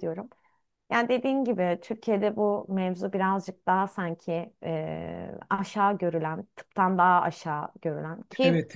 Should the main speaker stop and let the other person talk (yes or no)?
no